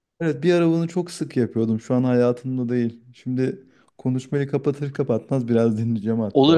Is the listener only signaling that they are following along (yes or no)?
no